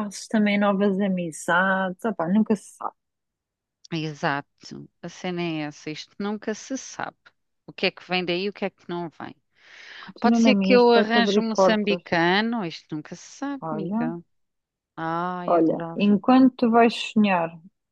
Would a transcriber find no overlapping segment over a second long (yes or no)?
no